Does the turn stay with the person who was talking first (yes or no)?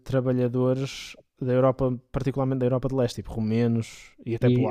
no